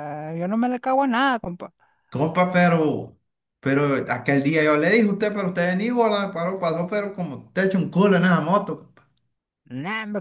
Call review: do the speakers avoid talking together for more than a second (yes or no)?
yes